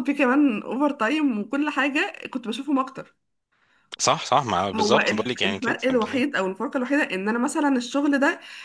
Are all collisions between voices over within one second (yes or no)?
no